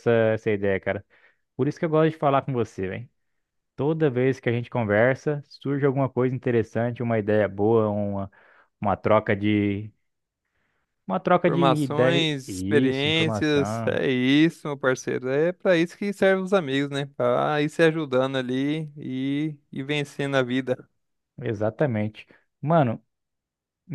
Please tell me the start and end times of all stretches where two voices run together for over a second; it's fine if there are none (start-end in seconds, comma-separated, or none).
11.4-14.0